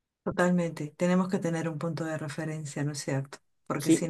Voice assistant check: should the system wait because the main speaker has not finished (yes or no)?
yes